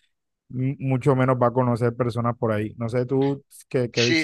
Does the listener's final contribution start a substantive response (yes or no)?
yes